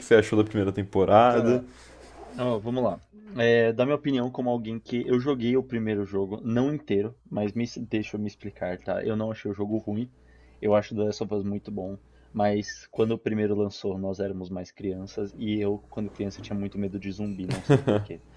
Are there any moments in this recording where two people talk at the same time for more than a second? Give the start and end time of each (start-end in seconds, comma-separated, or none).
none